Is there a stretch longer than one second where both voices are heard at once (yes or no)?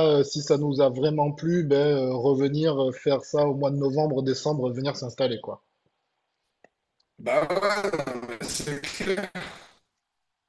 no